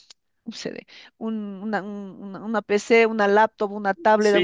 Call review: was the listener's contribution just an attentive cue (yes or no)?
yes